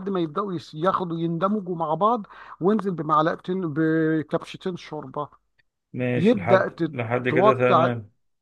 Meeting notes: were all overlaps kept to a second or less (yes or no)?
no